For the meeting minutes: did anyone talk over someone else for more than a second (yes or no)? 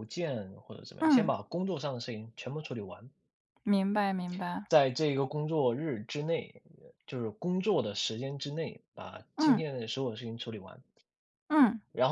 no